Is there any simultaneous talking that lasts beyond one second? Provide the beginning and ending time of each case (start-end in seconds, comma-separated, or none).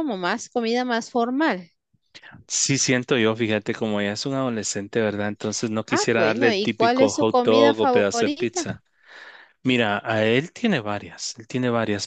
5.9-8.7